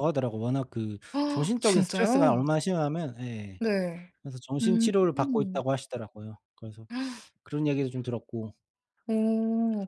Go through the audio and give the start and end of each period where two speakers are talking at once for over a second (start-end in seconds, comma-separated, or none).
1.1-2.4